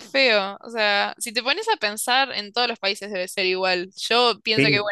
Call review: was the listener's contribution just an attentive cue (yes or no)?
yes